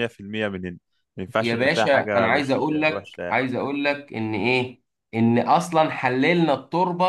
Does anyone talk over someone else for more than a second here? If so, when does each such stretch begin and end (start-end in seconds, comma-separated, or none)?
1.4-3.4